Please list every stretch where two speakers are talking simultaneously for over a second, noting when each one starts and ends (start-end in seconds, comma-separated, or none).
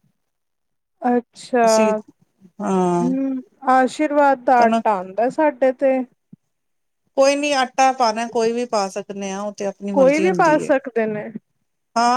none